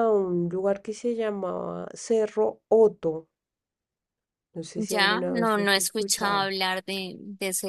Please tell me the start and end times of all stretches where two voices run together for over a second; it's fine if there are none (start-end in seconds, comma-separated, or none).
4.8-6.5